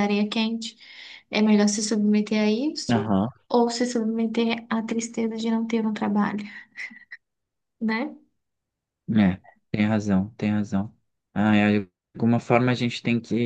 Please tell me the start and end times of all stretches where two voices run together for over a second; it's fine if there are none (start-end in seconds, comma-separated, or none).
none